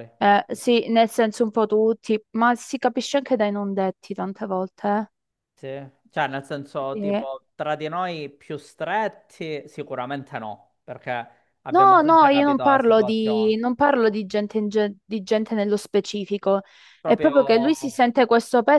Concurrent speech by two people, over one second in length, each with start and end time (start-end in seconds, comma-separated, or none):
11.7-13.6